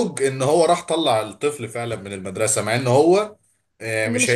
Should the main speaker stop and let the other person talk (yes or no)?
no